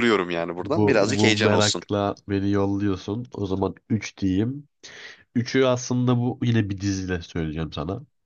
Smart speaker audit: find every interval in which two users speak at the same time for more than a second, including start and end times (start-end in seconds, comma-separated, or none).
0.6-1.8